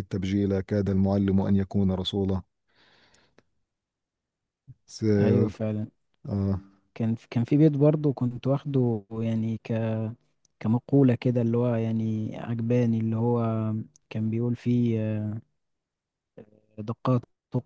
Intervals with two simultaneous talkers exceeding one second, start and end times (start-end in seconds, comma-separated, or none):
none